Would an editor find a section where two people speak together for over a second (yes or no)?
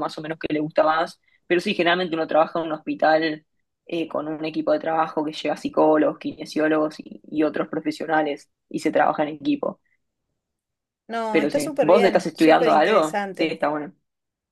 yes